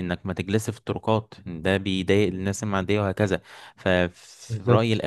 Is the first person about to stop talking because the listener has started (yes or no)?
no